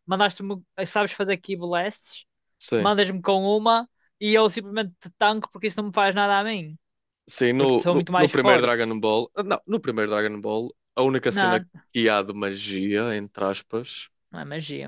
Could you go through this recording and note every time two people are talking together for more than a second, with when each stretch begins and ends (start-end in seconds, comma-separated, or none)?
7.6-9.0